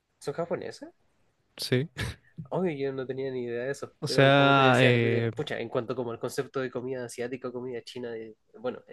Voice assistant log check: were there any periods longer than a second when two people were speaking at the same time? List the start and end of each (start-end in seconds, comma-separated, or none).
4.0-5.3